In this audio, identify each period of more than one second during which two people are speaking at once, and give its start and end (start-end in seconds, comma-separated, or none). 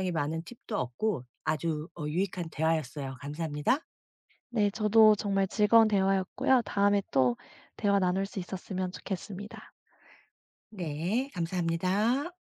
none